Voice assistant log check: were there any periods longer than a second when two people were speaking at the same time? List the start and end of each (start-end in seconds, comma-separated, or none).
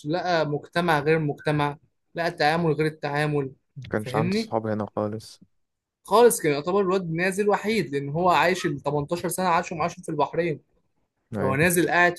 none